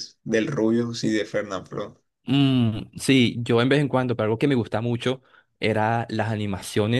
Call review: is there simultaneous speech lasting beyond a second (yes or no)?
no